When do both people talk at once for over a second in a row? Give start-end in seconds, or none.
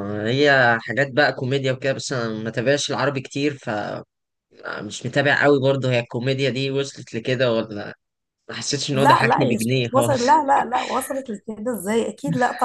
8.9-10.2